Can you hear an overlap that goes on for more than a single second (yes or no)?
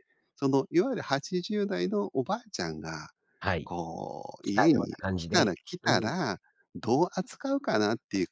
yes